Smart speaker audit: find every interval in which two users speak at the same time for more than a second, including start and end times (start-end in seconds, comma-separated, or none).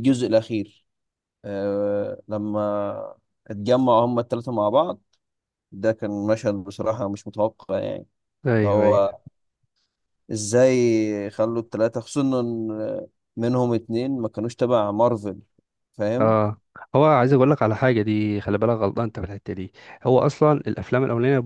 none